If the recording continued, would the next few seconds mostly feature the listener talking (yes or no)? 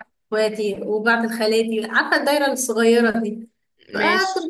no